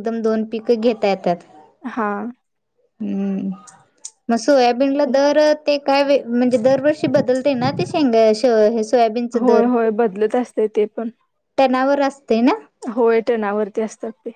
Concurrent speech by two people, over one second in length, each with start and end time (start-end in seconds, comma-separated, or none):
none